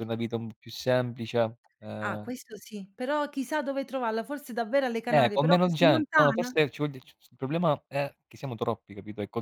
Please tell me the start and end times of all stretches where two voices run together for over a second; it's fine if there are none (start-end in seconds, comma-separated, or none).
5.1-6.5